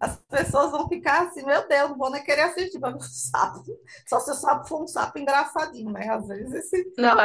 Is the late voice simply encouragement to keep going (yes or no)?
no